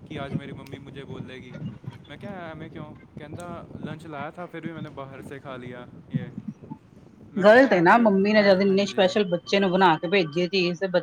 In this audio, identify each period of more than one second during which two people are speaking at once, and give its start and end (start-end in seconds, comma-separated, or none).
7.4-9.1